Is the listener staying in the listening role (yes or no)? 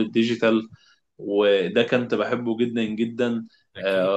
yes